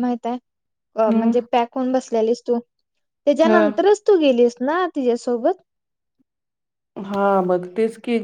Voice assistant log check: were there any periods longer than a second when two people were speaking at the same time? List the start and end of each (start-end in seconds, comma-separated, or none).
none